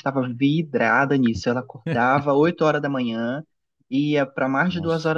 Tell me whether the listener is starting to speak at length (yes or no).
no